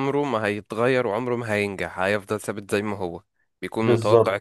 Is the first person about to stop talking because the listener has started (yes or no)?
no